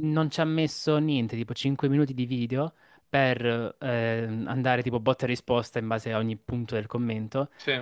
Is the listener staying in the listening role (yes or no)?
yes